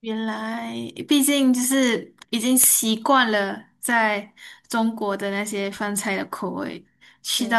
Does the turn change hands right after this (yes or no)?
no